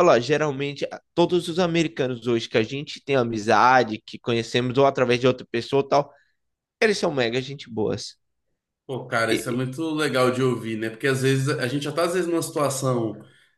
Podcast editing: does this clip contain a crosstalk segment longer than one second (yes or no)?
no